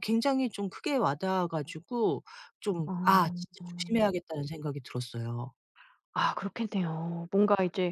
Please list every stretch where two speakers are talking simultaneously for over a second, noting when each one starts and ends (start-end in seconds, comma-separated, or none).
none